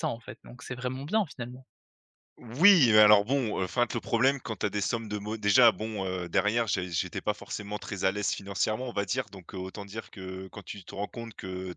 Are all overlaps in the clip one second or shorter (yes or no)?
yes